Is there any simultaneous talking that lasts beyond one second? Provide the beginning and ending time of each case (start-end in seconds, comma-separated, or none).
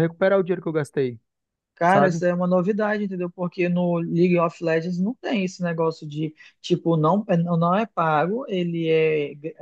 none